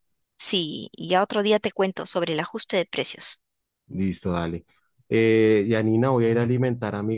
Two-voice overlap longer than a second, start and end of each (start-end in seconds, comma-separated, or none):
none